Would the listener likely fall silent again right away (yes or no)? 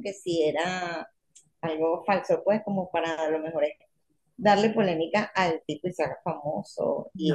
yes